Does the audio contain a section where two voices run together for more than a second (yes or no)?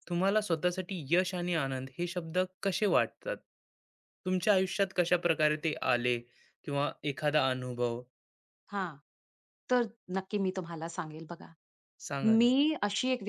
no